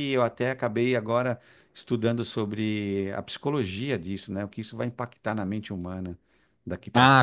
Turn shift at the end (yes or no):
yes